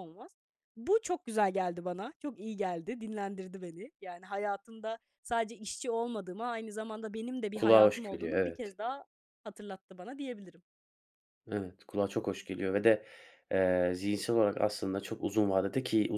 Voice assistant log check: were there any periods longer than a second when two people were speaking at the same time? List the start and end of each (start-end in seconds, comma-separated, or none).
7.5-8.8